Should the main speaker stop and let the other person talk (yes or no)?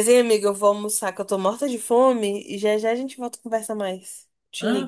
yes